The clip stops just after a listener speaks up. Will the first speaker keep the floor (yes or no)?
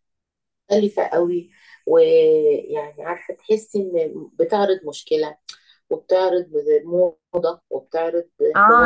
no